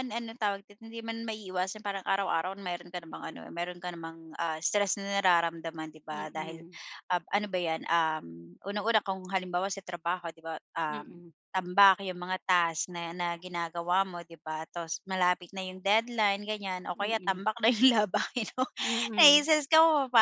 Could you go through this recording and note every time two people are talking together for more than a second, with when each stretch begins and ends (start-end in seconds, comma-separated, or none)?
none